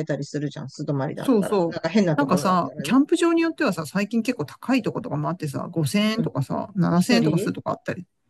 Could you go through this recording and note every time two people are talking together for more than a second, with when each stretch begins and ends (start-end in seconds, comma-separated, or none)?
1.2-3.0